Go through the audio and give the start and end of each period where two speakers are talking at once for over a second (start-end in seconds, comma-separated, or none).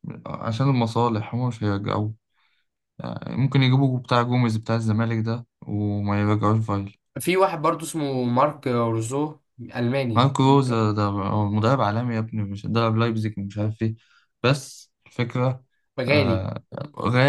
none